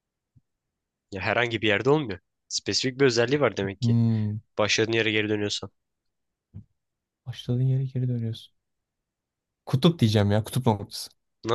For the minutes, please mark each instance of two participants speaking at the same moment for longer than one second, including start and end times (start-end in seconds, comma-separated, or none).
none